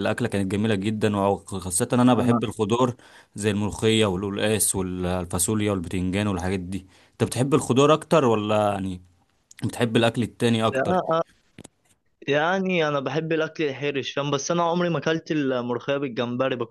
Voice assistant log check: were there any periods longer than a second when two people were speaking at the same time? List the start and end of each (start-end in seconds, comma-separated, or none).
none